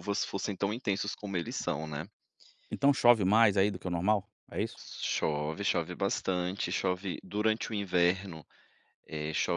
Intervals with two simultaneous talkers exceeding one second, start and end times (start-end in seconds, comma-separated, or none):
none